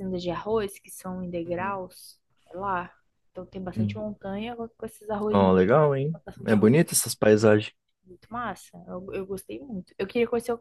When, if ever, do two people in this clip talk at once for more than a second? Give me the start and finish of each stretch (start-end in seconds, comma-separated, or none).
5.3-6.9